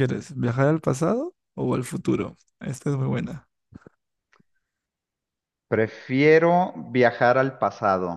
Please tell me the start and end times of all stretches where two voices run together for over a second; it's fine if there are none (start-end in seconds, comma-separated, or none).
none